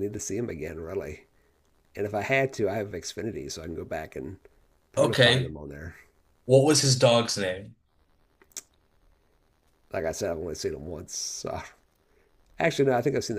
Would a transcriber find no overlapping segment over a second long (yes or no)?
yes